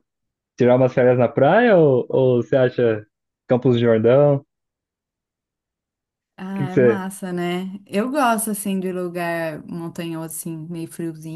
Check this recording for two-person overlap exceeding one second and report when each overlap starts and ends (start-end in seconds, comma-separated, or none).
none